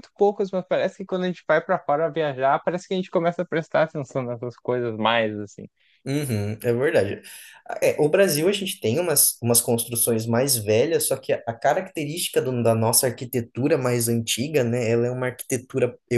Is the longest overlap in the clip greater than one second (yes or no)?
no